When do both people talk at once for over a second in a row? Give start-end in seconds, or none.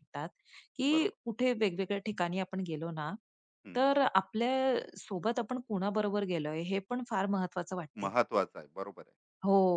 none